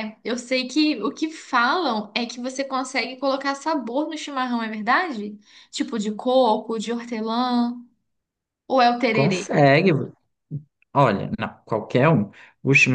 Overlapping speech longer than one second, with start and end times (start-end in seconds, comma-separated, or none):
none